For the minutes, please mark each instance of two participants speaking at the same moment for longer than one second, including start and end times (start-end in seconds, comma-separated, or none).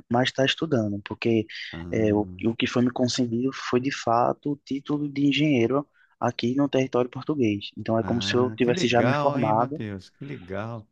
8.0-9.8